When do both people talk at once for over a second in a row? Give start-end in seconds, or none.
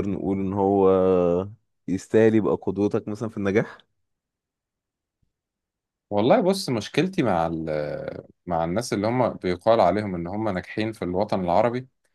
none